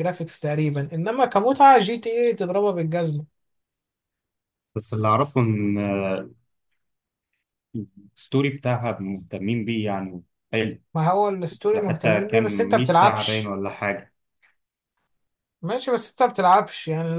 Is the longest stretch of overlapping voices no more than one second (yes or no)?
no